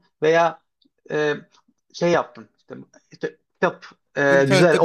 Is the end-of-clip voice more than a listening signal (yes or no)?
no